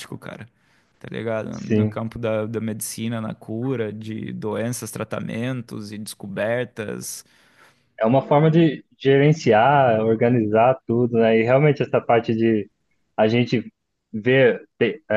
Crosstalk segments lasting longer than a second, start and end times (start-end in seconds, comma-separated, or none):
none